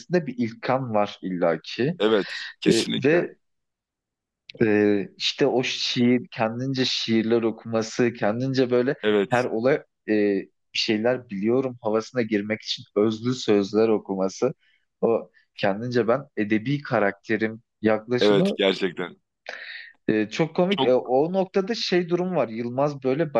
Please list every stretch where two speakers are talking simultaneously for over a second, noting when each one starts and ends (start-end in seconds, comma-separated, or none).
none